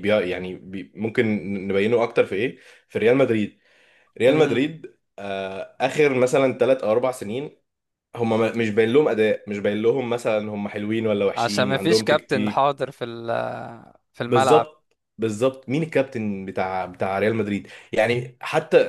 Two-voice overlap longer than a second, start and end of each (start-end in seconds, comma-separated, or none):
11.4-12.7